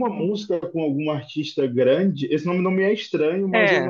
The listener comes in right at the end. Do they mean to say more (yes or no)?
no